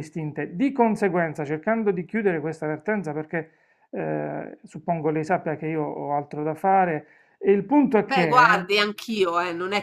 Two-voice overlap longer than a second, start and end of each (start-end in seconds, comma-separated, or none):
none